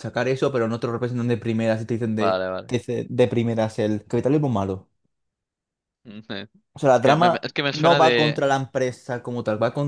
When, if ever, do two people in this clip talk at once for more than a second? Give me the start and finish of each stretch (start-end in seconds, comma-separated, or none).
7.0-8.4